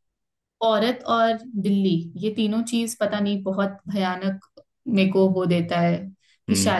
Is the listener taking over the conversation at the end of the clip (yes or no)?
no